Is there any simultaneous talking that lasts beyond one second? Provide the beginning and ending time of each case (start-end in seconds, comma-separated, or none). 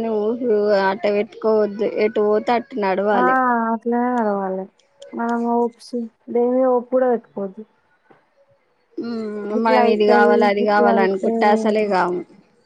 9.7-11.9